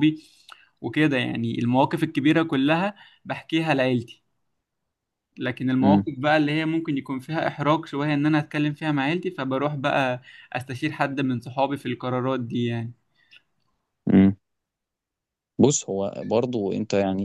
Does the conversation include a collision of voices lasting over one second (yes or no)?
no